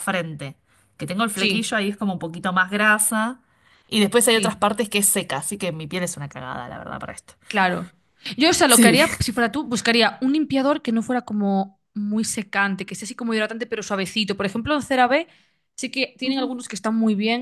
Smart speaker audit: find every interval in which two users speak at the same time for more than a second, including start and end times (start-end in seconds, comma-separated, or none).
none